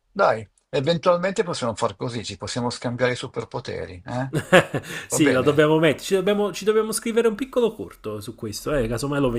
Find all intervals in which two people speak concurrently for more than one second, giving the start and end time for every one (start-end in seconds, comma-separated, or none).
none